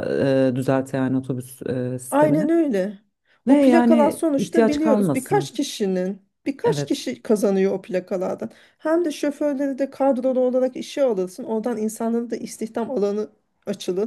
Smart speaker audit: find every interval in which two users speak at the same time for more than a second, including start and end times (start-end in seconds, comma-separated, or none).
3.5-5.5